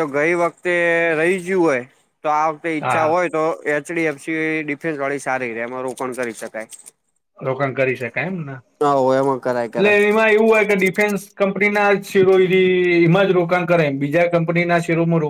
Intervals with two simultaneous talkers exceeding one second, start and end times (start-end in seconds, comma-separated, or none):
none